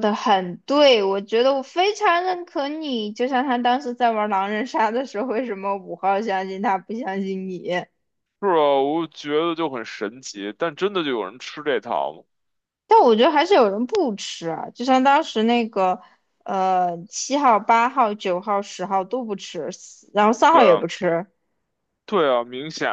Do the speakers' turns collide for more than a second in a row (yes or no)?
no